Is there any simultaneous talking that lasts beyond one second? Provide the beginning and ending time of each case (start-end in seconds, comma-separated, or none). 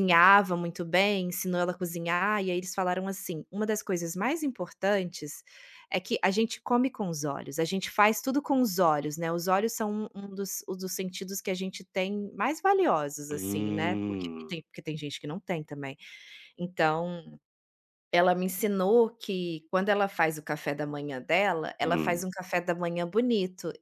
13.3-14.6